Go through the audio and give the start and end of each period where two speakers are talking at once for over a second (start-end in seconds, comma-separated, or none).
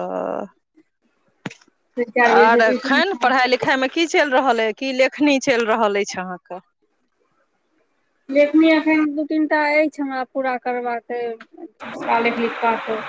2.3-3.7